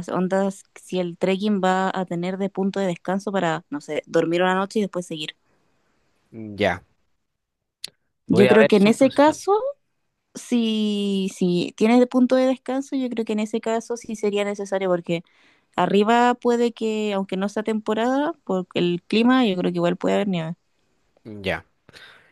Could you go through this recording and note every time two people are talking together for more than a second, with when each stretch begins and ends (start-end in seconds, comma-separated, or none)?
8.3-9.5